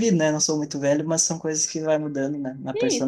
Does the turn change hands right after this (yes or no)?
yes